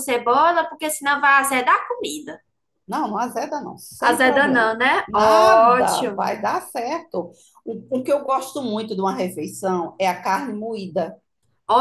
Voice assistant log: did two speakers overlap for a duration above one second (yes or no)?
yes